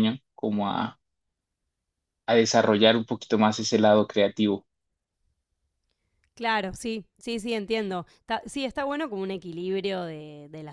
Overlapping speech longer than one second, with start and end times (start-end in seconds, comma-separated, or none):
none